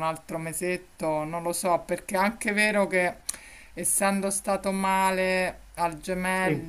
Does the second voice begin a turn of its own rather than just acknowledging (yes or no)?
no